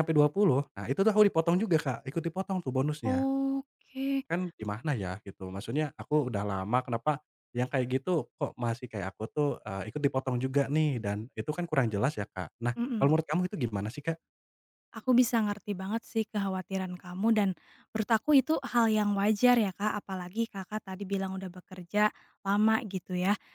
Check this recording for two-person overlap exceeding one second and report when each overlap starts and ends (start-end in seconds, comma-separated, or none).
none